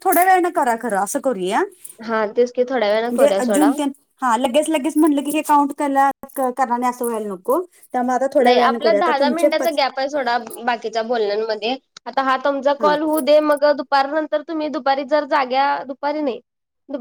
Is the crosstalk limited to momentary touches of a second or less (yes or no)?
yes